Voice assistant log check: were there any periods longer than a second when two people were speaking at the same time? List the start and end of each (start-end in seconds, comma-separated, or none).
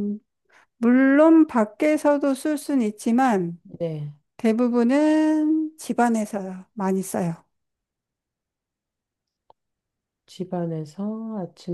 none